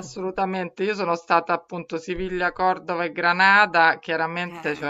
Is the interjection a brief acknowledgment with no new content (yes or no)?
yes